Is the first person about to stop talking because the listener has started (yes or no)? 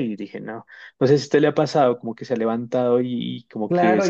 yes